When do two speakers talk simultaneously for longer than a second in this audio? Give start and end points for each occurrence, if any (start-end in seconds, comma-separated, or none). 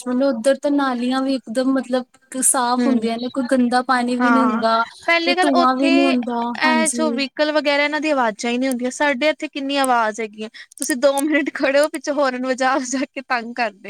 5.2-7.2